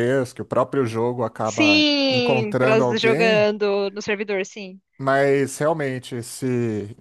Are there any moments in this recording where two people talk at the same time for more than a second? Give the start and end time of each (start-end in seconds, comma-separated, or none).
1.4-3.5